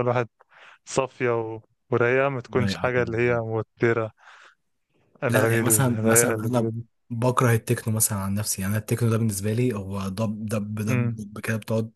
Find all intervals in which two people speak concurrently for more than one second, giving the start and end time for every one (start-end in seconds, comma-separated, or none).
5.3-6.7